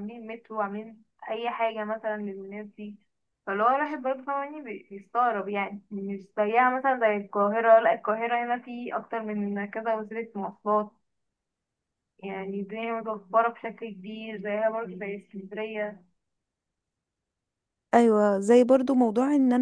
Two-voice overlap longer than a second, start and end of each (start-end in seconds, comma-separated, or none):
none